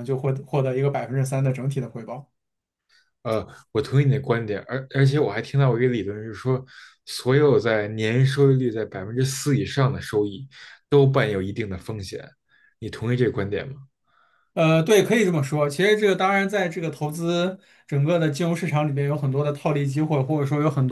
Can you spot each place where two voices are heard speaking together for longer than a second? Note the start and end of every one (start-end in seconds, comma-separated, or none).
none